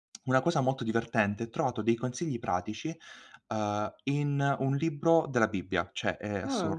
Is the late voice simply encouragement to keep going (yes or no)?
yes